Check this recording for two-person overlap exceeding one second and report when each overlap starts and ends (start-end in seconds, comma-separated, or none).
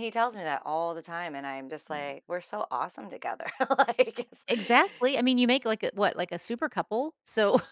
none